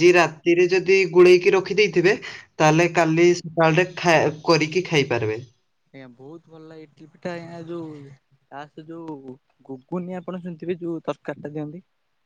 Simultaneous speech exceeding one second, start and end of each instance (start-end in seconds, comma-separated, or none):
none